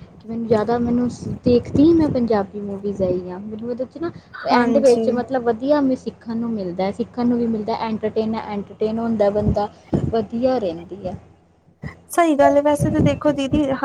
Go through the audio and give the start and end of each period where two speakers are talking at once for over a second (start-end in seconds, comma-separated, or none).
none